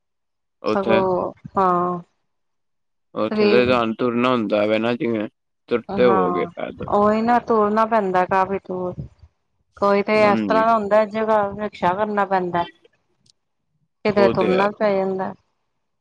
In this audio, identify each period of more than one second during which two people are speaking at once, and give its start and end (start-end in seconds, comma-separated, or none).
none